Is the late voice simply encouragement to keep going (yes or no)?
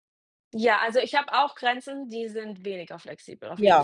no